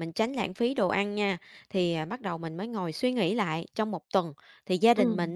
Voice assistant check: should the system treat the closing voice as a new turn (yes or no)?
no